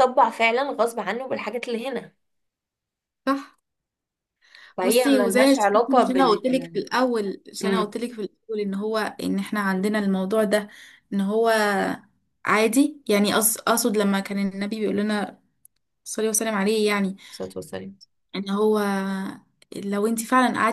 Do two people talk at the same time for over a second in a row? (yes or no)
yes